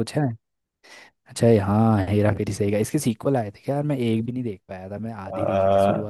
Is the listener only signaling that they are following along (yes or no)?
no